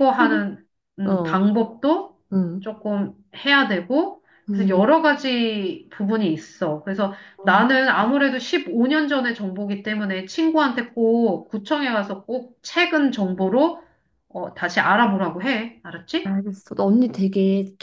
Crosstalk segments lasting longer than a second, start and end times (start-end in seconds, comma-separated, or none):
none